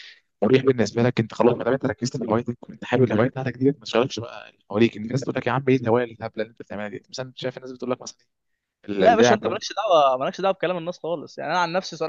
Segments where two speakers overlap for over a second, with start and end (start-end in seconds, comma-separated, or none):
none